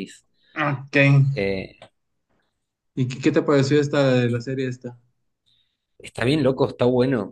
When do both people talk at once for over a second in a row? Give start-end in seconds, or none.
none